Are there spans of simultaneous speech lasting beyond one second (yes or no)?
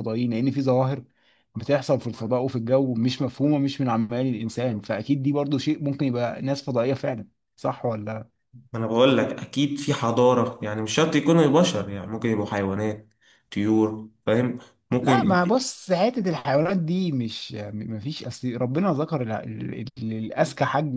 no